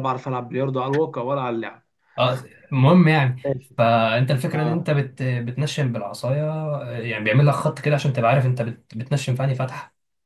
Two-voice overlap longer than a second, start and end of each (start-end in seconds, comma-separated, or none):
none